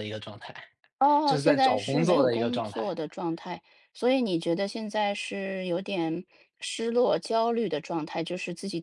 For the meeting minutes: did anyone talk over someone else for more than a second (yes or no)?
yes